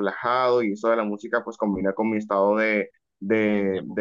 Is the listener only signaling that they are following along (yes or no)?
yes